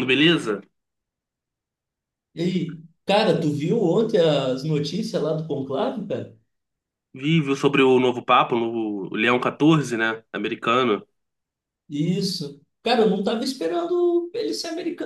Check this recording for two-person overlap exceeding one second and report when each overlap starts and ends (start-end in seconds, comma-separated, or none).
none